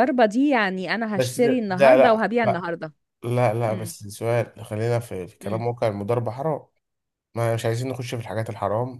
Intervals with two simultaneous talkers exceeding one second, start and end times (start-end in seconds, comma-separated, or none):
1.1-2.7